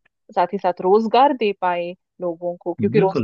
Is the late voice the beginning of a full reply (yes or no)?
yes